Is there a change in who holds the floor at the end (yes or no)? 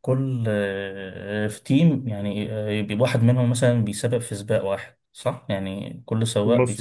yes